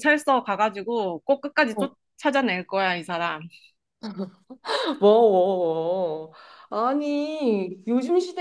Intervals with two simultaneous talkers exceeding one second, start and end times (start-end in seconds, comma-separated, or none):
none